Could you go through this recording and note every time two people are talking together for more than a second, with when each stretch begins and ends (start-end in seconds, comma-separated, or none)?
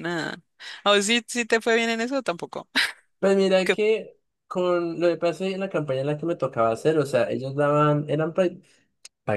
none